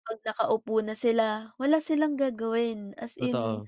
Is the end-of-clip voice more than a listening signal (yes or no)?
no